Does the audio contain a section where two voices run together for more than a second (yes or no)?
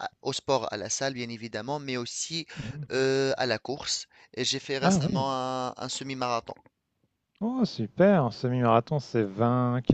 no